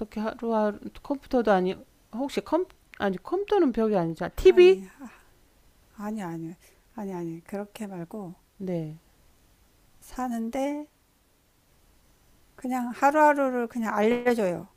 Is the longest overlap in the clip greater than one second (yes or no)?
no